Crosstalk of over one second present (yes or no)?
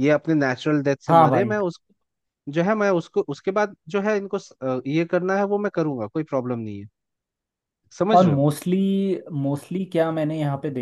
no